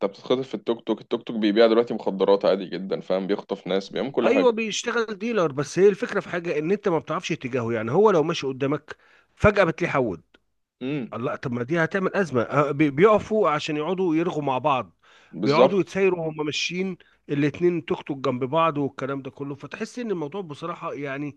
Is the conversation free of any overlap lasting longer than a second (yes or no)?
yes